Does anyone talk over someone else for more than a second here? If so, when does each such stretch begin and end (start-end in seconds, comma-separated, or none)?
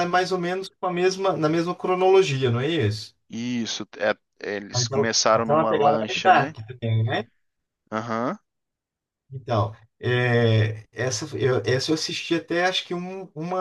4.7-6.6